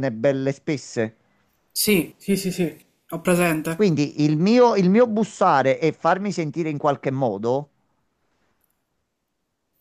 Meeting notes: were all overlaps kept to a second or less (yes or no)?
yes